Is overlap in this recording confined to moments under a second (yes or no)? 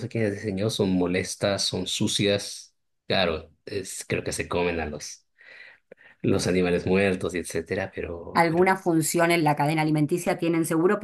yes